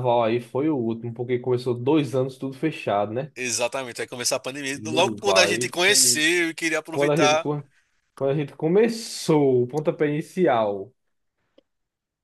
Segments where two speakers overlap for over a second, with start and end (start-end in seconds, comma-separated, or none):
4.7-6.2